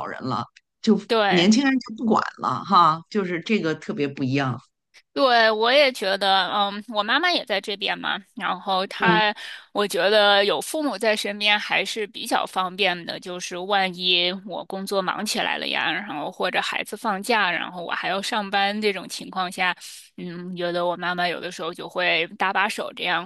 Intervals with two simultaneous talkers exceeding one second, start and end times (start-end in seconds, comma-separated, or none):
none